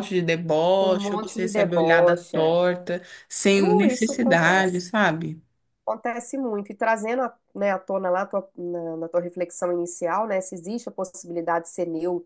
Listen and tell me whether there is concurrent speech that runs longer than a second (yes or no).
yes